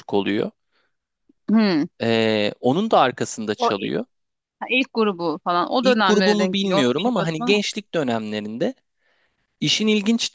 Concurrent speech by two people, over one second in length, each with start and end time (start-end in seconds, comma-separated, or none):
5.8-7.6